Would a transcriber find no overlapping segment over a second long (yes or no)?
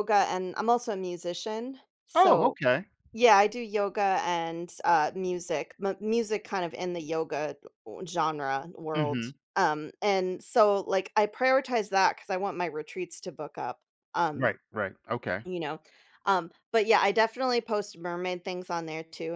yes